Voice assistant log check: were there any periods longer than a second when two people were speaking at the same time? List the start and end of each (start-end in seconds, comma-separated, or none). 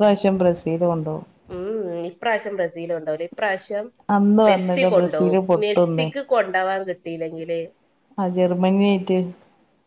4.5-6.1